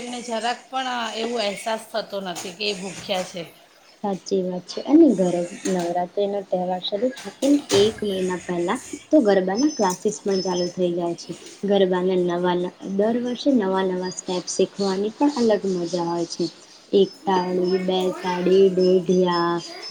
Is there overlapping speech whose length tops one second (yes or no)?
yes